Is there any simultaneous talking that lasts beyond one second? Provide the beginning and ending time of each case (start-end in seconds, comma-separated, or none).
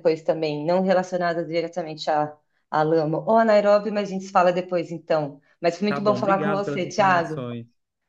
5.9-7.4